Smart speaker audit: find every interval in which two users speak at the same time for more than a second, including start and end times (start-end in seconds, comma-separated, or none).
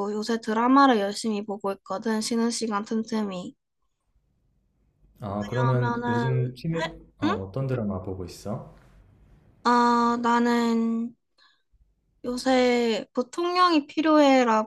5.4-7.4